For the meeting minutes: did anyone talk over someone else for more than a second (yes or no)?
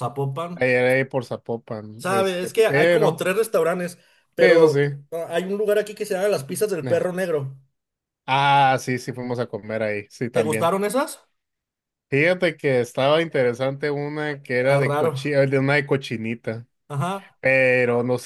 yes